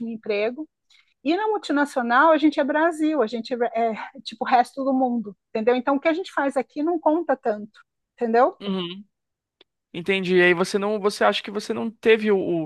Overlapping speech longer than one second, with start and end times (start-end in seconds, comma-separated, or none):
none